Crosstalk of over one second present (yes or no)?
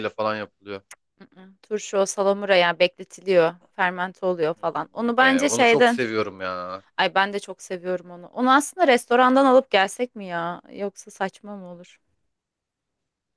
yes